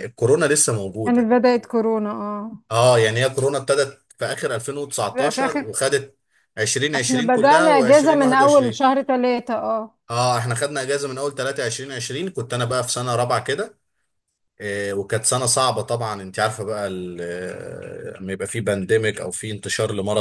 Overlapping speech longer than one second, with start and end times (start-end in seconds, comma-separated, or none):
7.0-8.9